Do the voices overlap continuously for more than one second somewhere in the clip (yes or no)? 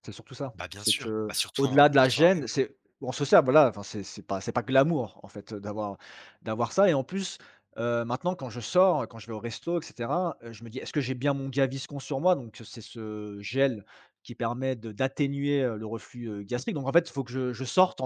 yes